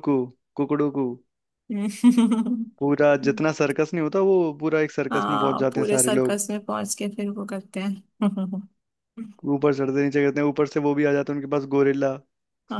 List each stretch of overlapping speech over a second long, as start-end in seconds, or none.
5.1-6.4